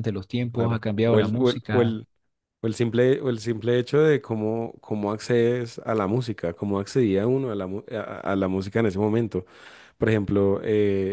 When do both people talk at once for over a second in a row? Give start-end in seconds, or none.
0.5-2.0